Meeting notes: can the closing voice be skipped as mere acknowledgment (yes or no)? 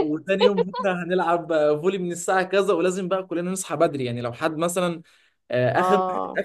yes